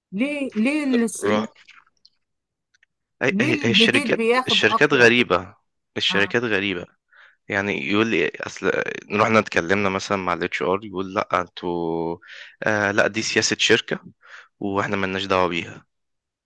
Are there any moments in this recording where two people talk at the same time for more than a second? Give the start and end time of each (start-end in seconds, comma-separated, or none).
3.3-5.1